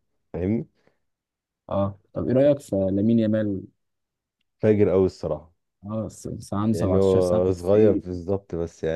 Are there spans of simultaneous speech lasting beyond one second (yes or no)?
yes